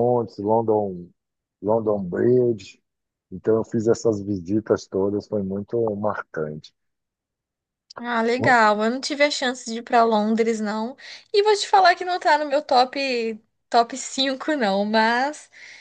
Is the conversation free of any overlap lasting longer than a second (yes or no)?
yes